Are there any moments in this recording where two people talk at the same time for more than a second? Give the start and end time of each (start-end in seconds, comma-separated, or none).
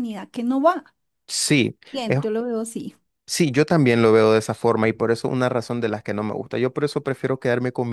none